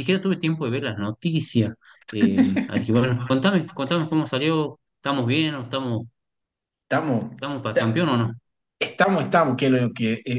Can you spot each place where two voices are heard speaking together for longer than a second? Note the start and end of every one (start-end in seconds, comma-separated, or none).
none